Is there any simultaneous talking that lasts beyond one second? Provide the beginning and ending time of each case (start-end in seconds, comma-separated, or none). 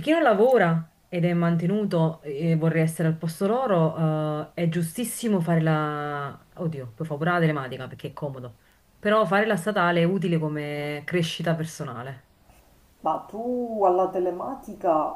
none